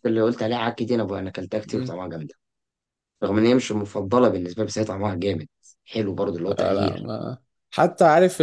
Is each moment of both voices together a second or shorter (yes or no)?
yes